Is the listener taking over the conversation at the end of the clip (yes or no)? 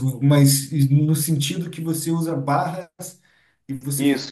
no